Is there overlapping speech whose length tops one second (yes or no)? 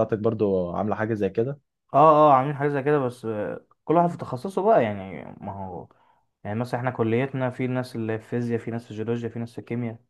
no